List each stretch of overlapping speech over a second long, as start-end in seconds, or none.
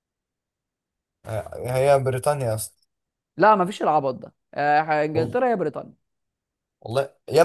none